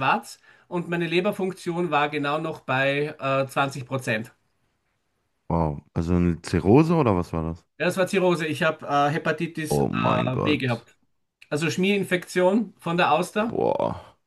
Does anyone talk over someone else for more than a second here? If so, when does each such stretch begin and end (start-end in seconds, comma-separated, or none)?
9.7-10.9